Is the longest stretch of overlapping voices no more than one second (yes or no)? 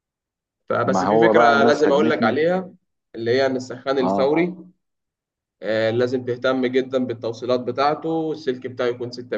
no